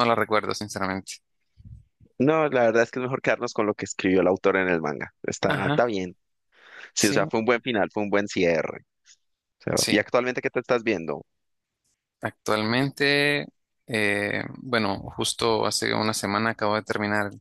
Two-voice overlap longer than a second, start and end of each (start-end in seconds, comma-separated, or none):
none